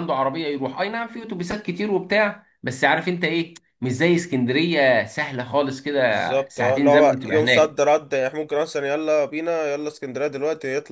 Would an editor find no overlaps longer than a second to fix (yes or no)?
no